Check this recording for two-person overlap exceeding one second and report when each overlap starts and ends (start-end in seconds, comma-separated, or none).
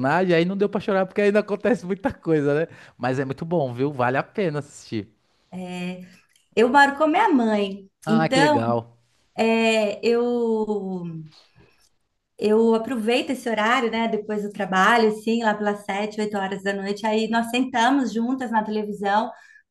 none